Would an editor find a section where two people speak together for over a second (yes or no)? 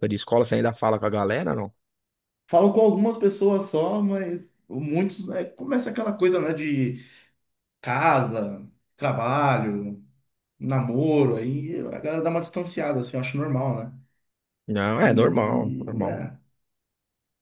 yes